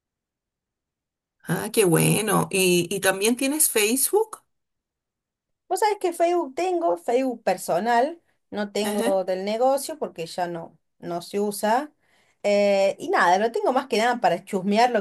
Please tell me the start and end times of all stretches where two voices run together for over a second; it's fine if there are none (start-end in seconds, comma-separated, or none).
none